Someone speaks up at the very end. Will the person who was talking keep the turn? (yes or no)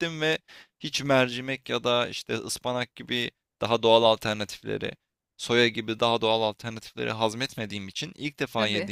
yes